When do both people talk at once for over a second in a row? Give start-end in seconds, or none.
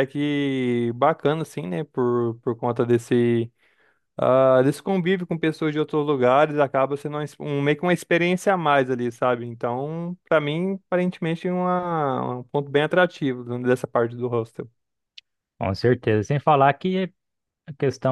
none